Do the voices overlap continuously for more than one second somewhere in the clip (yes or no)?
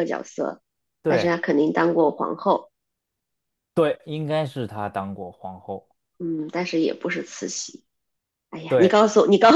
no